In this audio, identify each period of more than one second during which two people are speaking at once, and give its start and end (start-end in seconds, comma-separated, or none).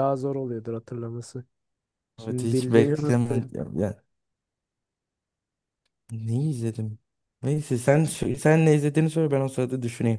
2.2-3.5